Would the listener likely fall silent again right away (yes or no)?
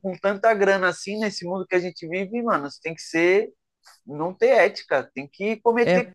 yes